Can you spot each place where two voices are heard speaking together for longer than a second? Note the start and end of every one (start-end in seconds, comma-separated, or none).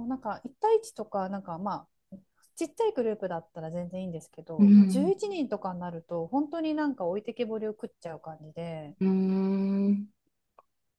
none